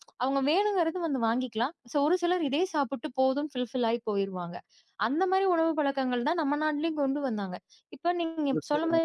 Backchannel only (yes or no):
yes